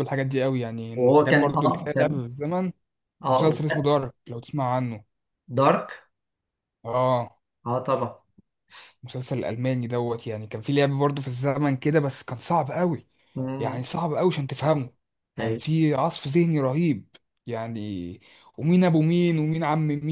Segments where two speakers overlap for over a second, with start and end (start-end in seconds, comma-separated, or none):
0.9-2.2